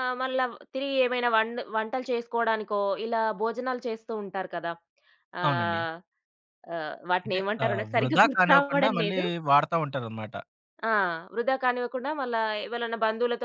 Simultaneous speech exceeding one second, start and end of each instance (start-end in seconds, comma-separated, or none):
7.2-9.2